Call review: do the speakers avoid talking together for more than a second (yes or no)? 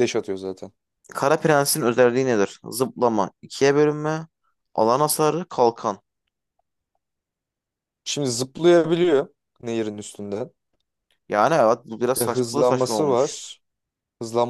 no